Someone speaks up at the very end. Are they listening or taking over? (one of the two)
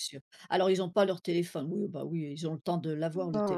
taking over